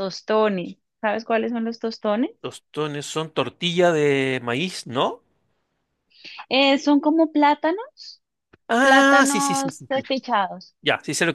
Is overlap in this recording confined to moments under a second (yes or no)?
no